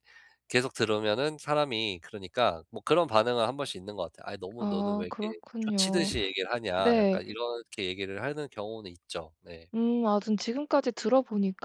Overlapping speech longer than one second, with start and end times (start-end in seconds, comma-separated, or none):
4.6-6.1